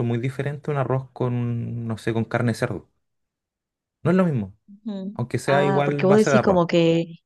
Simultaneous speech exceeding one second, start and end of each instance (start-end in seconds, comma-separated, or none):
5.1-6.6